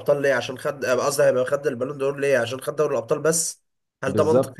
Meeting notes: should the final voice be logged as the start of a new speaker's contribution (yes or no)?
yes